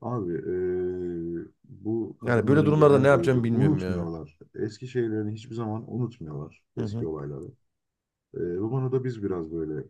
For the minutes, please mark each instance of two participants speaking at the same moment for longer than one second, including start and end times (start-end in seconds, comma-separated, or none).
2.2-4.1